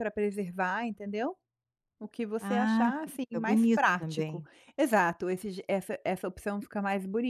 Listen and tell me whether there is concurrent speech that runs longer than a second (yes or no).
yes